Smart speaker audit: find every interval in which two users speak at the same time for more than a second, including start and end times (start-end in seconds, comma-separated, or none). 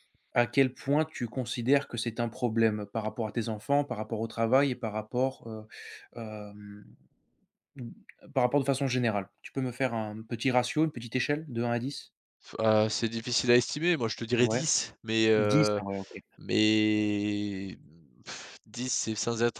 none